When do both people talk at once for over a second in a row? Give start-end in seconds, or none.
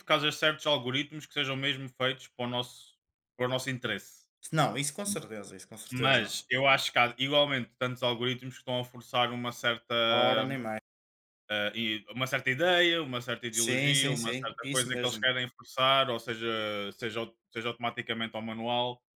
13.5-15.3